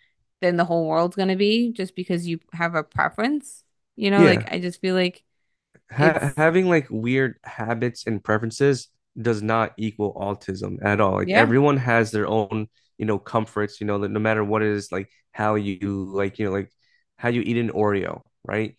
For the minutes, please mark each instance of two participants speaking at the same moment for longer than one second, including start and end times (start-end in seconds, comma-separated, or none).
none